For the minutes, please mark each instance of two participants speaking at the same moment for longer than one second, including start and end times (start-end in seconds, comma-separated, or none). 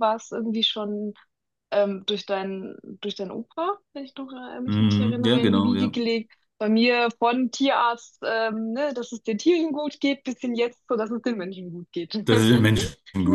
4.7-6.0